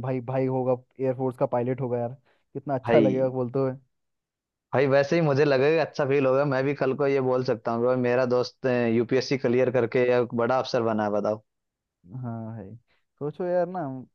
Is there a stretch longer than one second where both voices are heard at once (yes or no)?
no